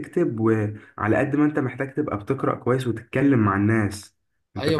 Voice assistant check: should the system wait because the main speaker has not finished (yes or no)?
no